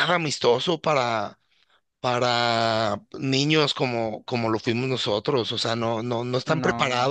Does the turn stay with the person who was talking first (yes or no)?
yes